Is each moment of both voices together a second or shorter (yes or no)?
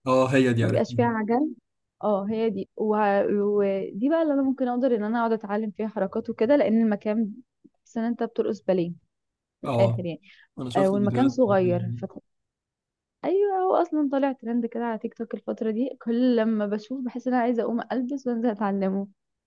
no